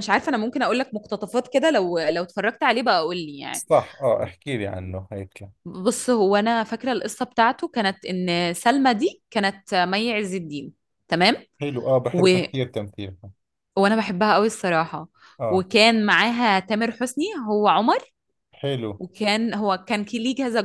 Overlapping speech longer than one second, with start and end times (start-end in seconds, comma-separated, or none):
none